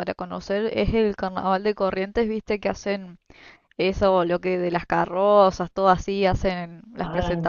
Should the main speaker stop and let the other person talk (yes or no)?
no